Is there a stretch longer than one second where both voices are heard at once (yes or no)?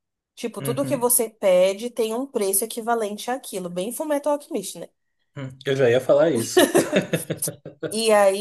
no